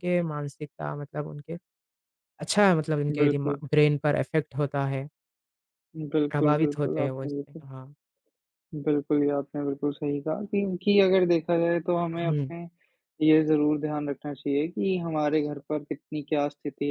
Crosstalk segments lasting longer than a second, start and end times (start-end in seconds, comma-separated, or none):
6.3-7.6